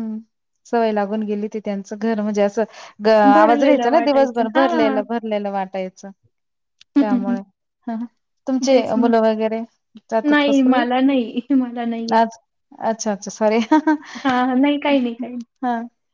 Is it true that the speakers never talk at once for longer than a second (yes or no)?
no